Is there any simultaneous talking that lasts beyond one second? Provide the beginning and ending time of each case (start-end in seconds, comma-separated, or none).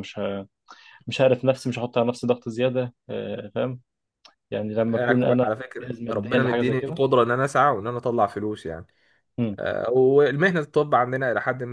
4.9-7.0